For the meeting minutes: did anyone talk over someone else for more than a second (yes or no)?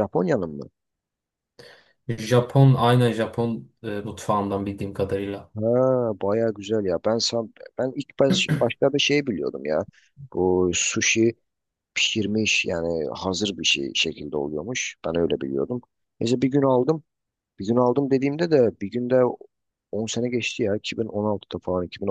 no